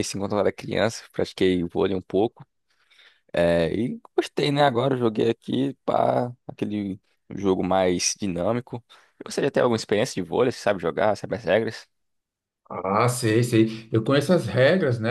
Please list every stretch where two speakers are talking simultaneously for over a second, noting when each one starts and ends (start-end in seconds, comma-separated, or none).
none